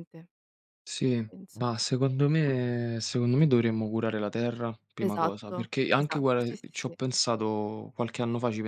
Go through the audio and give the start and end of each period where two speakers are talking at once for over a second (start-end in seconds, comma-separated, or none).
5.0-6.9